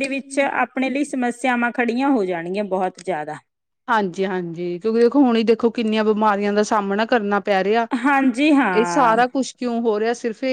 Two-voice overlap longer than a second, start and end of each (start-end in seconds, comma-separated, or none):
none